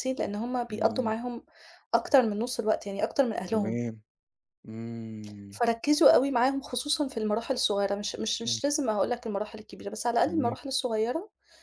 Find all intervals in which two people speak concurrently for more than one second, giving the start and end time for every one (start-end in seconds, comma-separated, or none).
none